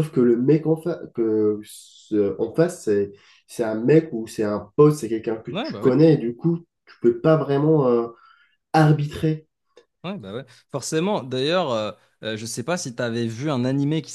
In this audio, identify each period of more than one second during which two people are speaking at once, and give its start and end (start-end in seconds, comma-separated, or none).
none